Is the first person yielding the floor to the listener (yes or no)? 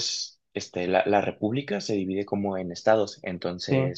no